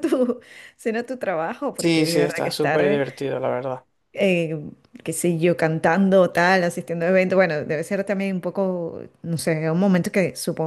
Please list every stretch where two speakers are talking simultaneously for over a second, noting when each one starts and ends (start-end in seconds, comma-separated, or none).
1.8-3.0